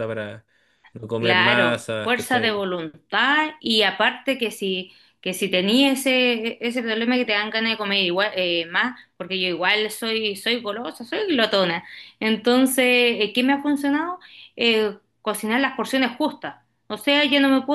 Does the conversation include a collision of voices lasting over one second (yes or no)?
yes